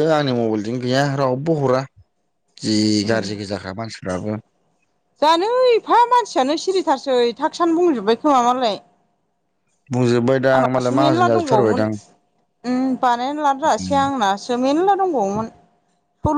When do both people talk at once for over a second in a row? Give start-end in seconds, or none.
10.6-11.8